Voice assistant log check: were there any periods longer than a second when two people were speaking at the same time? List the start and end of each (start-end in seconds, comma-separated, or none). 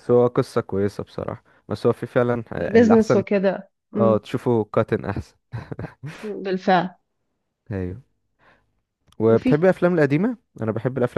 none